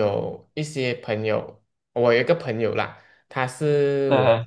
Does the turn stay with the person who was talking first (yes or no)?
yes